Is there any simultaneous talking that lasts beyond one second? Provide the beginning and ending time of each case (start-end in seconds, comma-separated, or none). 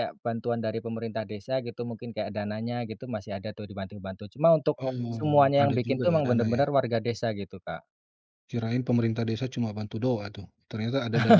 4.8-6.6